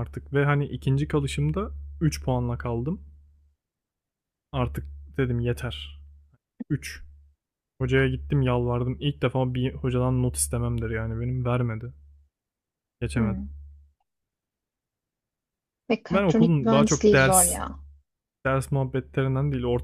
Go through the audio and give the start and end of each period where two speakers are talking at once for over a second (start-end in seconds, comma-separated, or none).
16.1-17.6